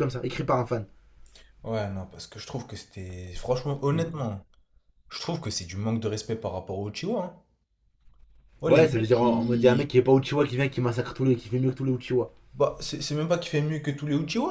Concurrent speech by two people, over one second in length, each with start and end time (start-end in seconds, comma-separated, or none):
8.7-9.9